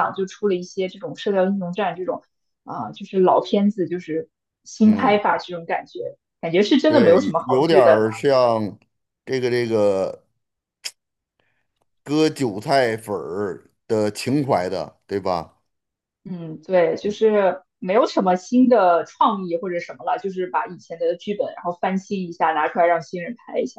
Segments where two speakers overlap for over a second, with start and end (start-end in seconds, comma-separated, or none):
6.8-8.1